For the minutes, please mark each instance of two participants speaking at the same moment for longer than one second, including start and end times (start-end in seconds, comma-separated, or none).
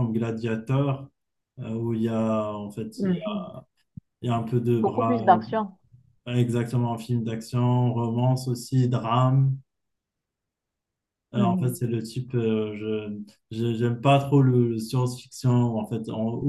none